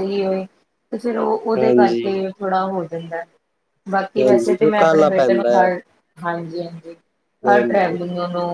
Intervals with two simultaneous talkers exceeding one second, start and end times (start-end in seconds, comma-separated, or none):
4.2-5.7